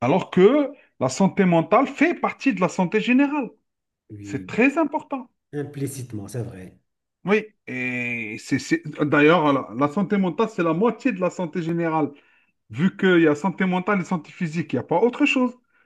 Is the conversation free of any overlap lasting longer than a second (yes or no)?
yes